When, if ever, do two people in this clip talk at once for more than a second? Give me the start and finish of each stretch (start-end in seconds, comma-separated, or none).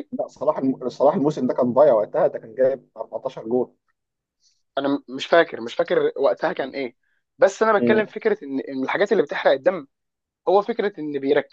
none